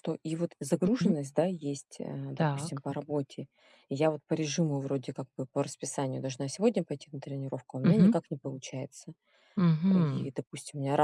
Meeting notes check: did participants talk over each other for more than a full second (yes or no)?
no